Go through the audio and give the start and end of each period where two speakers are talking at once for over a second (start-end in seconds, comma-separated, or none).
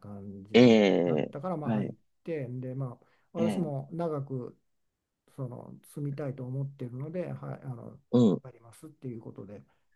0.5-1.9